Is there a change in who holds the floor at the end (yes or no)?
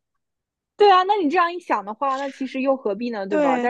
yes